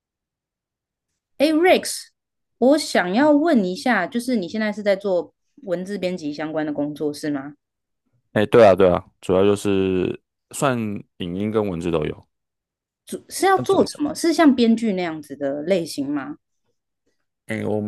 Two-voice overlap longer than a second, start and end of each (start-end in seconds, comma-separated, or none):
none